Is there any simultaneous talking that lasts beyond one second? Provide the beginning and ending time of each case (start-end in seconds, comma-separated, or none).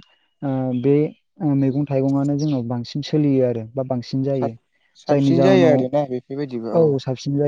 5.1-6.7